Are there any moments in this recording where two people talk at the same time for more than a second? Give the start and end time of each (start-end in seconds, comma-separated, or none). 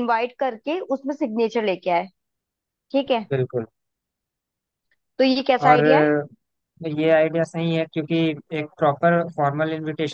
none